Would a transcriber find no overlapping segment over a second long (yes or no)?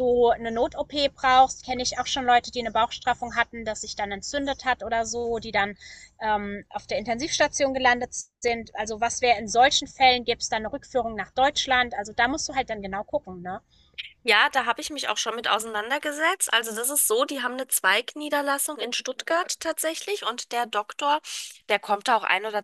yes